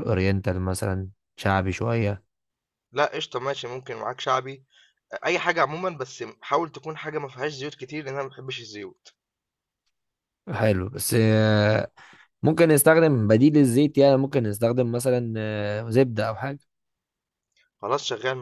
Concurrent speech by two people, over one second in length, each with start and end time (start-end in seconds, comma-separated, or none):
none